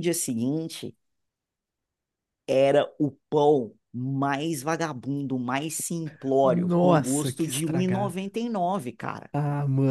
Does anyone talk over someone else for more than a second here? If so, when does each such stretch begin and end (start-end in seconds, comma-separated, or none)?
6.4-8.1